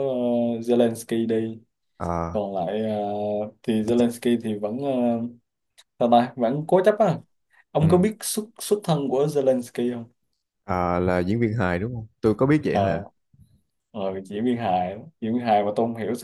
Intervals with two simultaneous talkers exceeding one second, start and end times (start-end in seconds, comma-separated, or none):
none